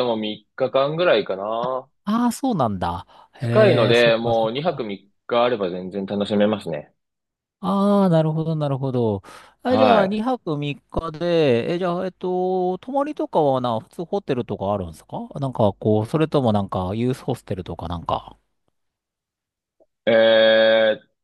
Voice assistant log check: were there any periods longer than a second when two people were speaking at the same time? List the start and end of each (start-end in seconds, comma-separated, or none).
3.4-4.9